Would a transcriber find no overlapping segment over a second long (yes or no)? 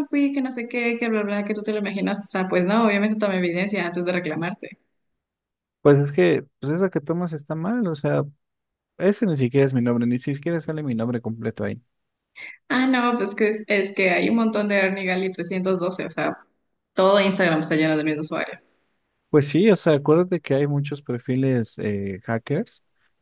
yes